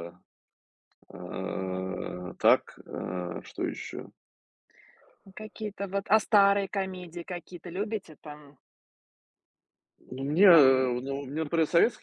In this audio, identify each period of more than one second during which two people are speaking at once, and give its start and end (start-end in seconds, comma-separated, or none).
none